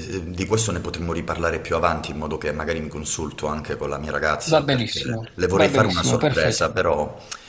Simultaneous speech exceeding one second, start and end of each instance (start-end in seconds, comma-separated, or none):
4.4-6.7